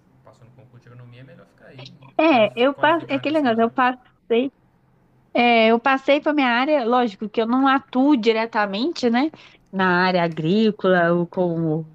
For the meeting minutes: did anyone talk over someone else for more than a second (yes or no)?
yes